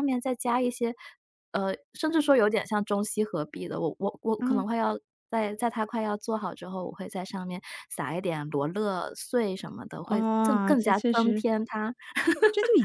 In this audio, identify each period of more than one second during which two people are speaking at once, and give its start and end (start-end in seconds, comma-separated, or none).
10.1-11.4